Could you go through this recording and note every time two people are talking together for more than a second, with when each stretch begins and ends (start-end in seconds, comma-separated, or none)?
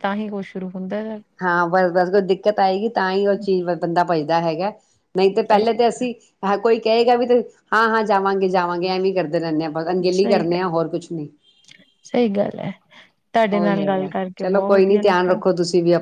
13.5-15.3